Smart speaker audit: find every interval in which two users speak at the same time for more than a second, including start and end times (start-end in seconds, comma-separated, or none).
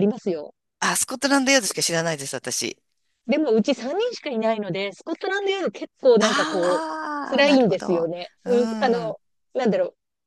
6.2-9.2